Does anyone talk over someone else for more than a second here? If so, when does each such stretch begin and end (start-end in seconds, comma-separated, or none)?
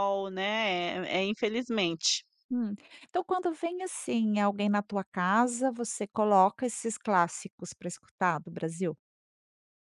none